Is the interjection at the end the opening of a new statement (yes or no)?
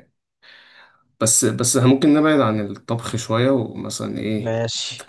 no